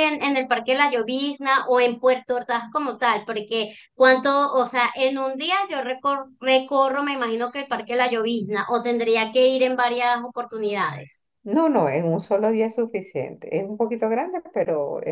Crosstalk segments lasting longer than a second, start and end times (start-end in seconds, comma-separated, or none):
none